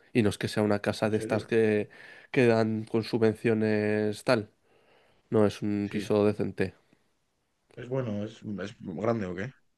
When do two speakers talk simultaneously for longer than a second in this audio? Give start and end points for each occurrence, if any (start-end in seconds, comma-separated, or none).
none